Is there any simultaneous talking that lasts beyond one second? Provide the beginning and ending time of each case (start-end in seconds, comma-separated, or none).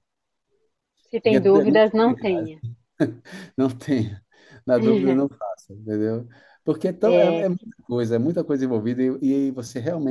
1.2-2.5